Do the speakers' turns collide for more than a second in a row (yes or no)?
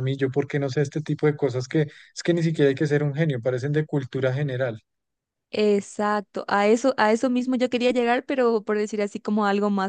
no